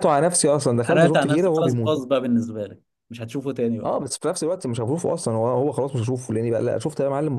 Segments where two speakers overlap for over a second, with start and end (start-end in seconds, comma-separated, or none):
0.8-2.0